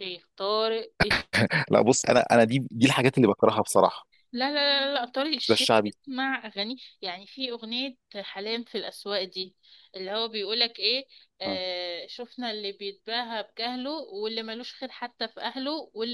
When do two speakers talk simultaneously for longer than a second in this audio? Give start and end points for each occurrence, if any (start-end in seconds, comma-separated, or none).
none